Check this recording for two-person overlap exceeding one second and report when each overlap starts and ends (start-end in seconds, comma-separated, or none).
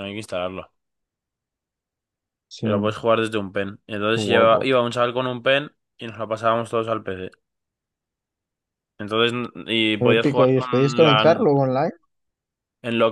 9.9-11.4